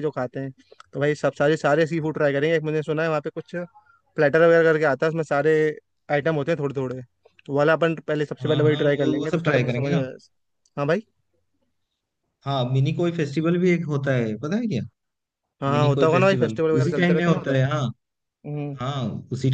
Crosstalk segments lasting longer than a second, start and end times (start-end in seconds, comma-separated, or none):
8.4-10.0, 15.7-17.6